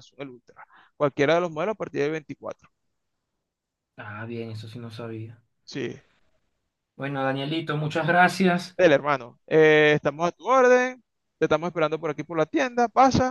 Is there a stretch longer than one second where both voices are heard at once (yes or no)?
no